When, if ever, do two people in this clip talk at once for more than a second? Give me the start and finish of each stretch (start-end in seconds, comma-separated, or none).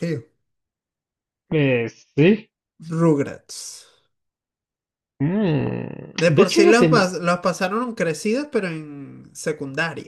none